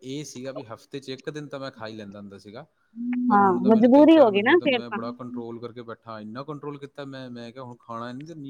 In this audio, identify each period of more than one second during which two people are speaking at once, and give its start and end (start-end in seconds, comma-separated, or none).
3.3-5.0